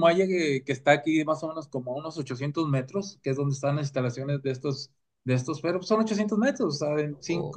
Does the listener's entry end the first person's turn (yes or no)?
no